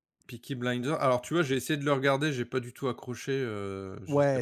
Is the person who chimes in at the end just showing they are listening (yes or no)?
no